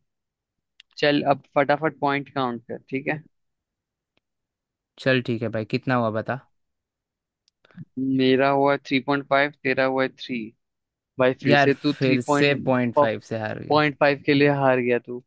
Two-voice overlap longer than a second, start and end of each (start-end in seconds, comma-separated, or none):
11.5-13.8